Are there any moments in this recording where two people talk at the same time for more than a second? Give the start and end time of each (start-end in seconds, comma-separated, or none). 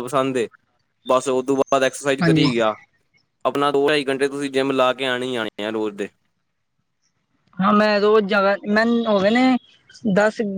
none